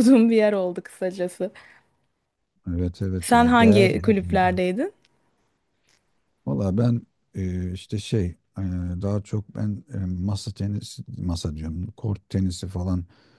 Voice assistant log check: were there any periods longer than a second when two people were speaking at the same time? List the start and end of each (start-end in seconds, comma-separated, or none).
3.2-4.5